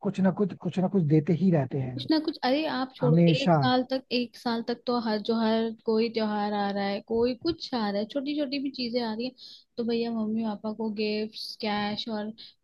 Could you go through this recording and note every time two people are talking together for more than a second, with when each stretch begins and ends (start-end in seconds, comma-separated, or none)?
none